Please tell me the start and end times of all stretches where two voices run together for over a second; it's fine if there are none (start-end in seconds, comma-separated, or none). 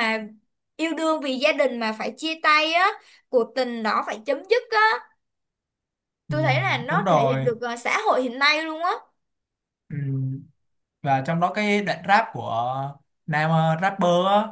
6.3-7.5